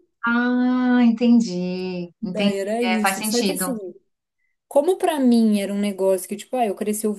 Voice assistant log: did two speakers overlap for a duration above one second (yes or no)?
yes